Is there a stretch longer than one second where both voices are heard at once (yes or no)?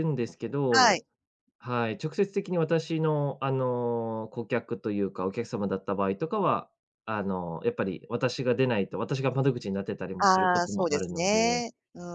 yes